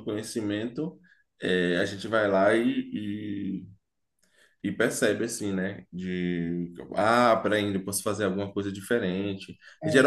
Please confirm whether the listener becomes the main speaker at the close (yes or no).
no